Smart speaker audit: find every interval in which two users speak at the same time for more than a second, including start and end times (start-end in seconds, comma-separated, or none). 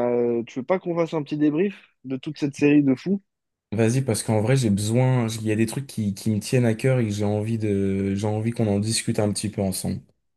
none